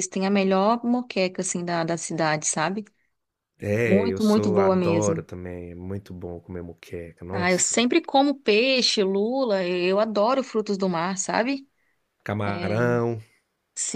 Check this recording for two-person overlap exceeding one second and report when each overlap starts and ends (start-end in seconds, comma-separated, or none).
3.9-5.2